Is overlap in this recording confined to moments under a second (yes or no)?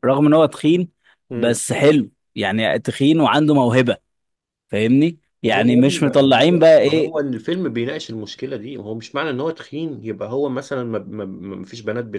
no